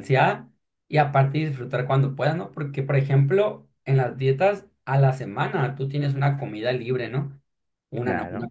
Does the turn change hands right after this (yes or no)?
no